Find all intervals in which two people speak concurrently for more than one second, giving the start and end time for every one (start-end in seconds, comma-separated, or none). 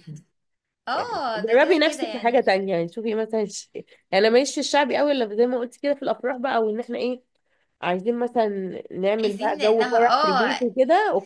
0.9-2.4, 9.2-10.7